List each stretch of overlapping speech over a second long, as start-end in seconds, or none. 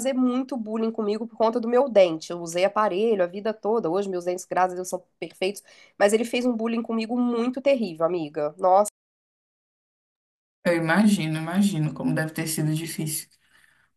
none